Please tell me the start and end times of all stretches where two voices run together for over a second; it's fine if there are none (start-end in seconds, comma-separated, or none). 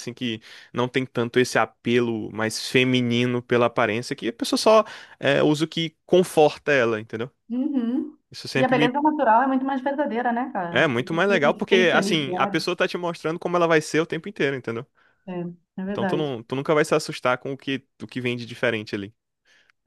10.7-12.7